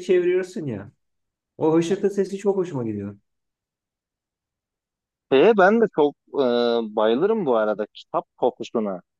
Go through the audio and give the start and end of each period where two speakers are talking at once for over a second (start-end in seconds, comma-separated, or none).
none